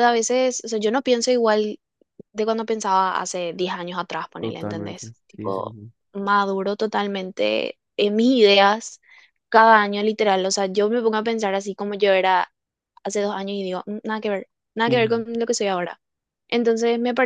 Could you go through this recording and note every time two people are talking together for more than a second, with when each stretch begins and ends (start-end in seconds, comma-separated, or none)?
4.4-5.8